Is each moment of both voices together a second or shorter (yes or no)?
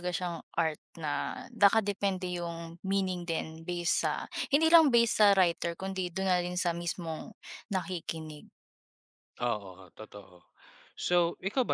yes